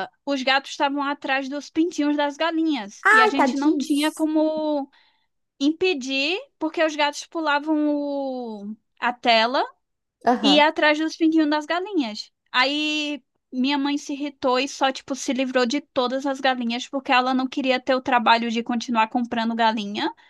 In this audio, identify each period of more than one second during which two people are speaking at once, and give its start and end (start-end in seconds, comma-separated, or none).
3.0-4.3